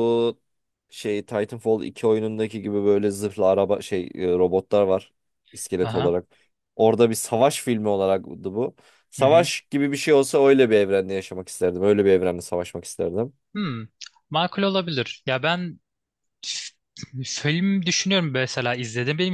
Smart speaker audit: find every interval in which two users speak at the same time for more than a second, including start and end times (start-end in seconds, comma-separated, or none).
none